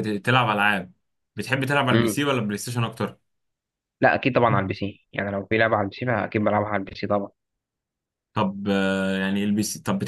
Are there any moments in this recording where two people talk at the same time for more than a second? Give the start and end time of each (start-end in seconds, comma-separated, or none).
none